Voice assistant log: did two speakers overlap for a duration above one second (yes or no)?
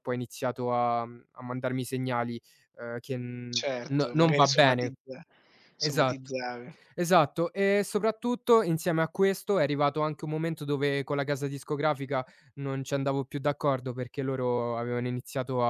yes